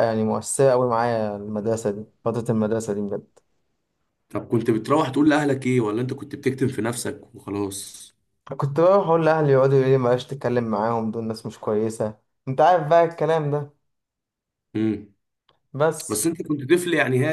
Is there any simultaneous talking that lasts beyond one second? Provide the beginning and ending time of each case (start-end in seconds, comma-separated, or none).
none